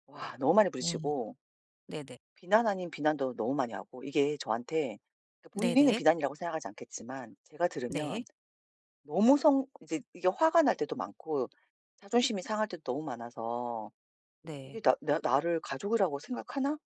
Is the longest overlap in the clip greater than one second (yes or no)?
no